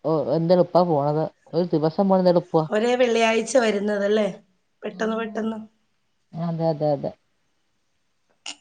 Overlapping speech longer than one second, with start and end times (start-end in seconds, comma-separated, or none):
none